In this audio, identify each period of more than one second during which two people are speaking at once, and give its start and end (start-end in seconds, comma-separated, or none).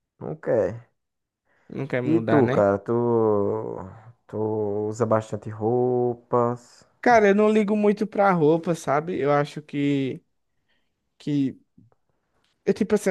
none